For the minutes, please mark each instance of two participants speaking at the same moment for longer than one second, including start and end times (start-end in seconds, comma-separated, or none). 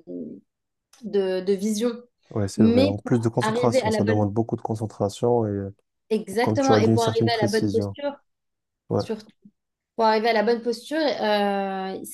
2.6-4.3, 6.4-8.0